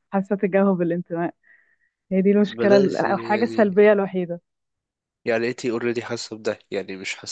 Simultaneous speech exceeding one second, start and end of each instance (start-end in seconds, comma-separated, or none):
2.4-3.8